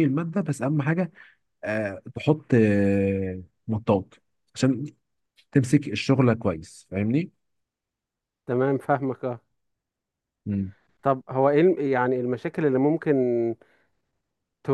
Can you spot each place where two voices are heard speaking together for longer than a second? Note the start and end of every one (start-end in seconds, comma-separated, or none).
none